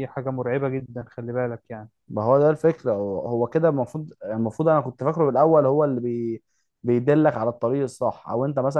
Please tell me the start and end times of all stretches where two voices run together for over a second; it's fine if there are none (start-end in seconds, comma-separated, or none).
none